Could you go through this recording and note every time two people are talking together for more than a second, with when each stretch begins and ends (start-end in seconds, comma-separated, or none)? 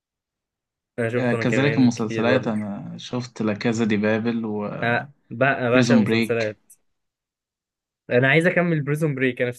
1.1-2.5